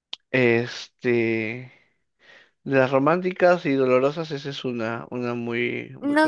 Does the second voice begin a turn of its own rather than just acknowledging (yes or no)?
yes